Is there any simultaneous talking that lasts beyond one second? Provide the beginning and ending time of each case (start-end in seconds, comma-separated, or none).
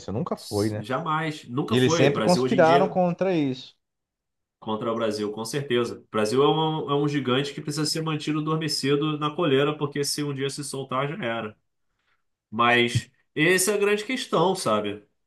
1.7-3.0